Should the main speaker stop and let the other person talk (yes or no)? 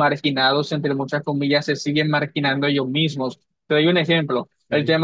no